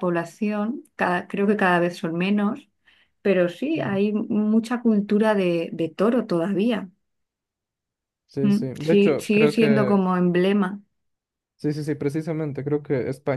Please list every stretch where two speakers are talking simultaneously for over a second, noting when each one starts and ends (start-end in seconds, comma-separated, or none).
8.4-10.0